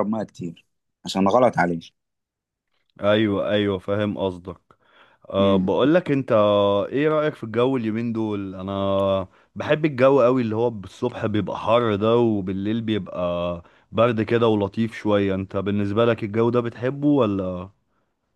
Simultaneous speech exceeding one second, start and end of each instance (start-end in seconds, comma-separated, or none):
none